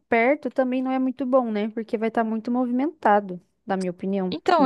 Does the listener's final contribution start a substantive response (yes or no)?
yes